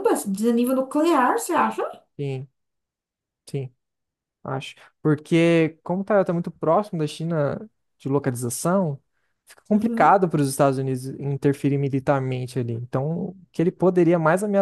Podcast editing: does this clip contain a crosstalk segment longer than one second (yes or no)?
no